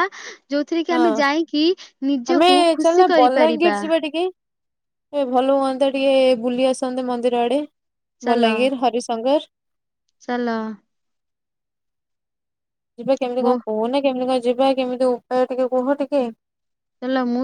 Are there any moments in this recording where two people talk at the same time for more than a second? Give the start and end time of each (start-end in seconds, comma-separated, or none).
none